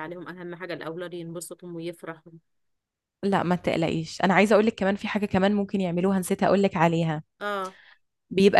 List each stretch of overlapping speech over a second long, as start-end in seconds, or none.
none